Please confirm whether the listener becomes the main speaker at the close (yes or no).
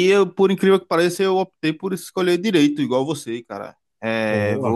no